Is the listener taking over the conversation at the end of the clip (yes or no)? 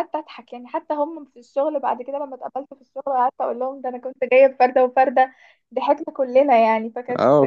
yes